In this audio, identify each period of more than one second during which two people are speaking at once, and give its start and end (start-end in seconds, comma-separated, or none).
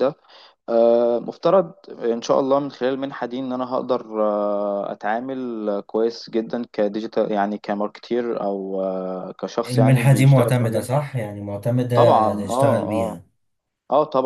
9.7-10.9, 11.9-13.2